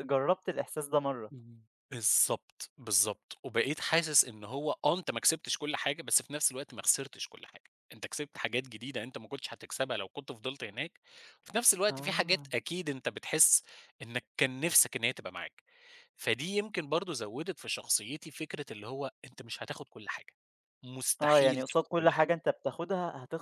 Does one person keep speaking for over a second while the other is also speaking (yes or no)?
yes